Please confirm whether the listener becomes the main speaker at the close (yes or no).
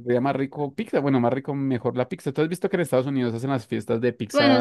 yes